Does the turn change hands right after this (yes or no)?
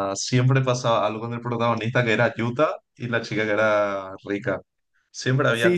yes